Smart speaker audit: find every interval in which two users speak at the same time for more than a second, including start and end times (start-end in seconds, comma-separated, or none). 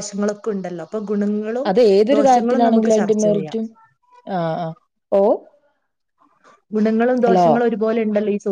2.2-3.6